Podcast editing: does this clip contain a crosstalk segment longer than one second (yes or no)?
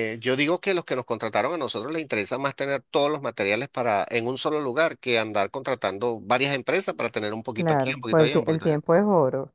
yes